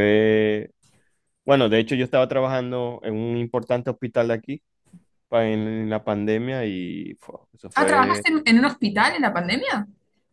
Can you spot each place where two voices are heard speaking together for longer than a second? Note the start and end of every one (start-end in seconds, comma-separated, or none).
none